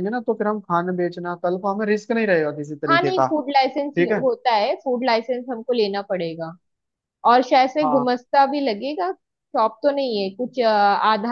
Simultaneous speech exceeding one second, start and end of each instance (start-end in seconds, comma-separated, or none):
none